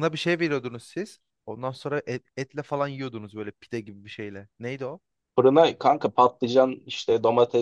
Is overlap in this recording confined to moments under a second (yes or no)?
yes